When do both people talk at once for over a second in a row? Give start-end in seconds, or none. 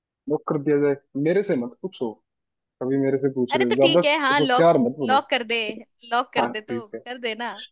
3.5-5.3